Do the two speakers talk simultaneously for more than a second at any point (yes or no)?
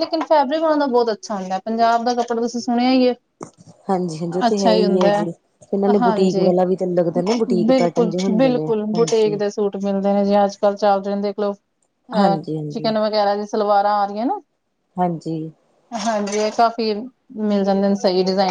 no